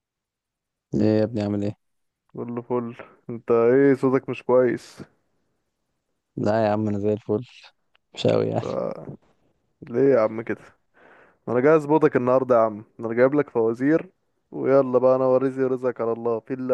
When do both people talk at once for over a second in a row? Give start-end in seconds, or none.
none